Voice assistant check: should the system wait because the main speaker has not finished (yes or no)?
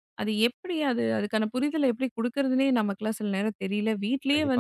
no